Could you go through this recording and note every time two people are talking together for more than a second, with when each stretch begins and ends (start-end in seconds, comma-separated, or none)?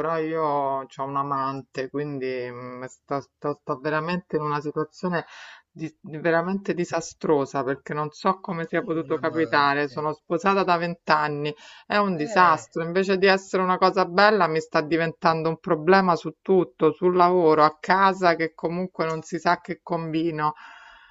8.4-10.0